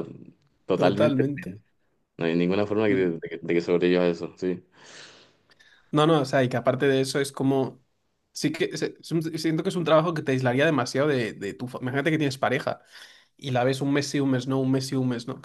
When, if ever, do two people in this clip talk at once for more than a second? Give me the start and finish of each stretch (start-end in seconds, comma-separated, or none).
none